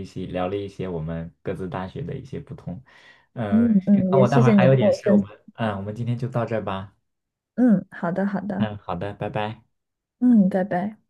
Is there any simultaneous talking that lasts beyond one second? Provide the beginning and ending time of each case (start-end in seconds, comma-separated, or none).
3.5-5.3